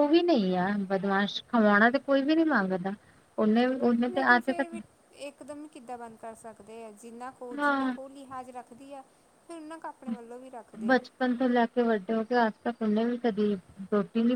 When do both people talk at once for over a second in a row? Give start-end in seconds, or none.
none